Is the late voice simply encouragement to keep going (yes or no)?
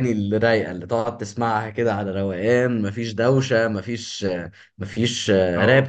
yes